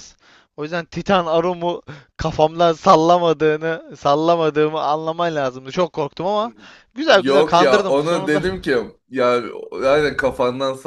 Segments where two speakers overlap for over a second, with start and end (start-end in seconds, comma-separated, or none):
7.1-8.5